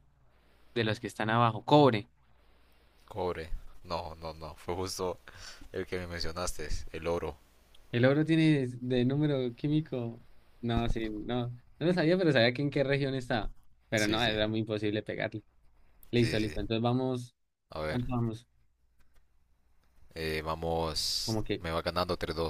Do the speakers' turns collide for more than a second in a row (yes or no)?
no